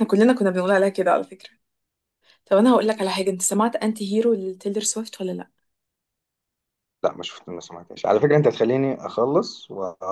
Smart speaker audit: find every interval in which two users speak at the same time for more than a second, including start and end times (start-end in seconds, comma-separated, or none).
none